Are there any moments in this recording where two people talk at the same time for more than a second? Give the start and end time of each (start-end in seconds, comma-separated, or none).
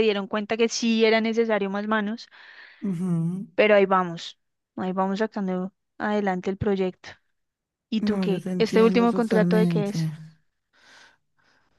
8.0-10.0